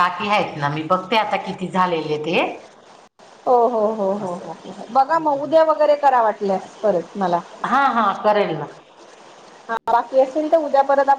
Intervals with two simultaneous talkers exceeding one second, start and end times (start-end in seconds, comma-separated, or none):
4.2-5.6